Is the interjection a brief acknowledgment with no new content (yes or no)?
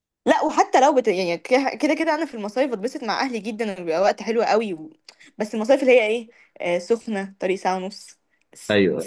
yes